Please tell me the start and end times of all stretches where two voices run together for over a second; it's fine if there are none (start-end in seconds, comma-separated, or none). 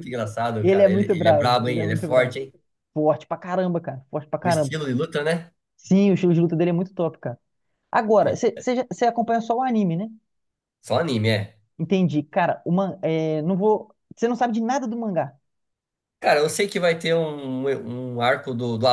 0.6-2.4